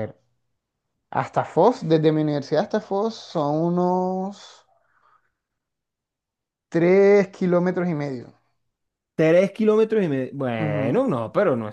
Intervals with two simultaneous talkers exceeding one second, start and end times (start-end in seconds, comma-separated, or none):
none